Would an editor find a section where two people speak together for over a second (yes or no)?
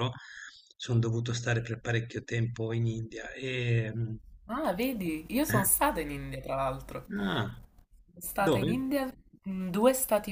no